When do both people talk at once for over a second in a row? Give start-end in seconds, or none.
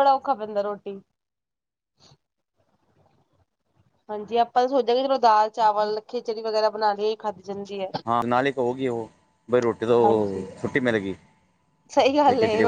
none